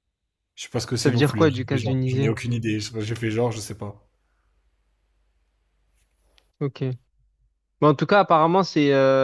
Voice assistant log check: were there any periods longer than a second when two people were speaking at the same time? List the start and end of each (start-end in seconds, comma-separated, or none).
1.0-2.3